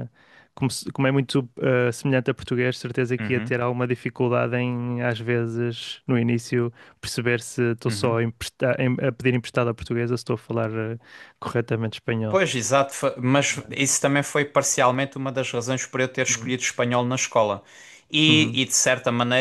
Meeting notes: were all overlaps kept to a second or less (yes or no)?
yes